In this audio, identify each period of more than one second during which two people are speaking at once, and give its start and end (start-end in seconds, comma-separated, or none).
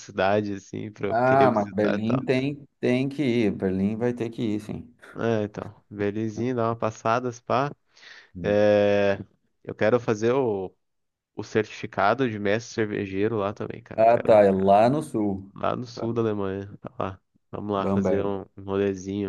1.1-2.3